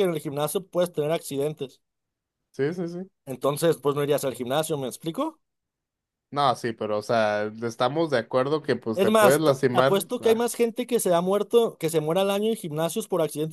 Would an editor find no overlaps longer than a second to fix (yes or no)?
no